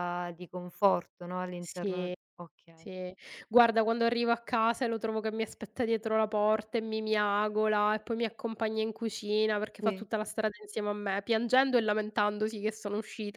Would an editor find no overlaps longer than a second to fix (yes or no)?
yes